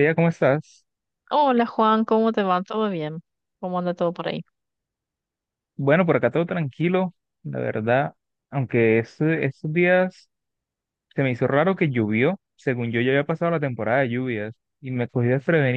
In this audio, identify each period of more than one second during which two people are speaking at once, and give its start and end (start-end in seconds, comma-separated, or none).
none